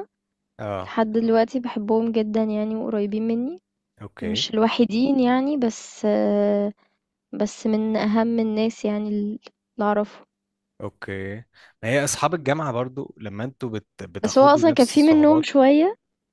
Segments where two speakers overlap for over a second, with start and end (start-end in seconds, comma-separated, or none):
14.2-15.4